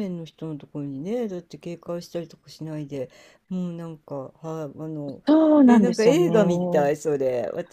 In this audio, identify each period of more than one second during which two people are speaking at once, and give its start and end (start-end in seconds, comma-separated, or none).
5.7-6.9